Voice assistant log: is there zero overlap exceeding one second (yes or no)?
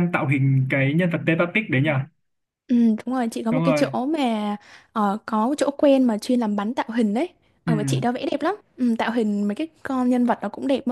yes